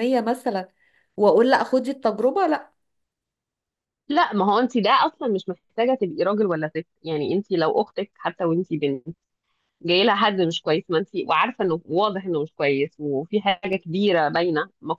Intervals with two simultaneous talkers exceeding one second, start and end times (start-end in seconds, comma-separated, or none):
none